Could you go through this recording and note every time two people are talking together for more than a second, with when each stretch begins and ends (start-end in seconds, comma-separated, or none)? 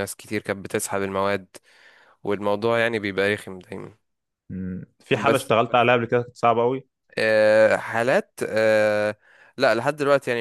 none